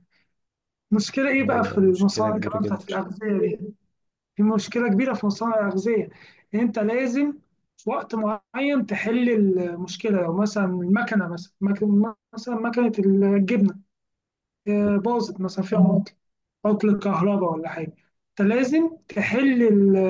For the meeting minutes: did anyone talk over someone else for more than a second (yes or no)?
yes